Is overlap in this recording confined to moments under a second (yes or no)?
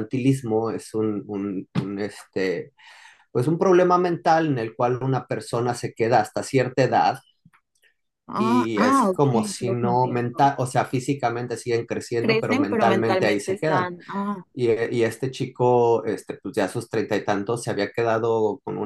no